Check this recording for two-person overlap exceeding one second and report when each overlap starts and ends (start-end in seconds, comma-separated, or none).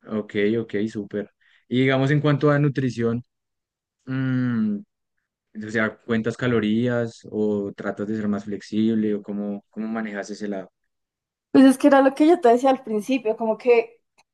none